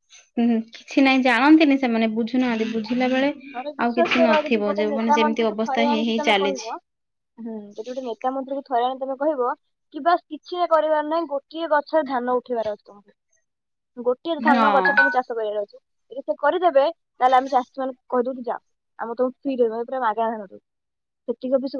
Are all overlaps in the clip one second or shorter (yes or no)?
no